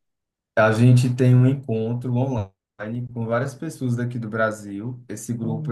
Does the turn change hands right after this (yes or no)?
no